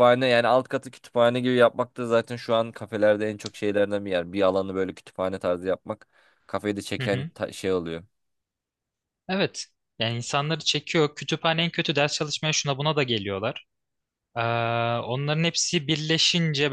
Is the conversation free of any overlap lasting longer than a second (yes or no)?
yes